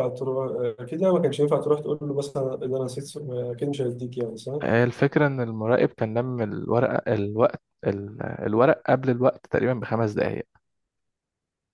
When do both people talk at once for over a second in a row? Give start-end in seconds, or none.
none